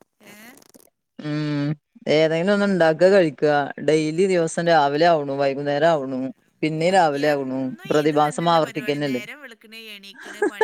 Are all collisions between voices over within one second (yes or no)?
no